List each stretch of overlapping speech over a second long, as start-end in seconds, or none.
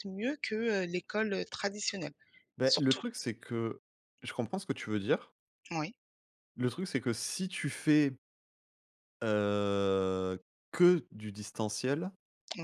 none